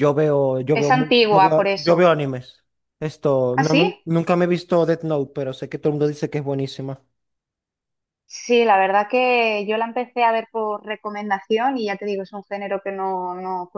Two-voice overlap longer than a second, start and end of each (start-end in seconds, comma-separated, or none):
0.7-2.1